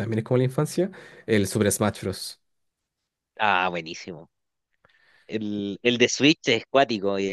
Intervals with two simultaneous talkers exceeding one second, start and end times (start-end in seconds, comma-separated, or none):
none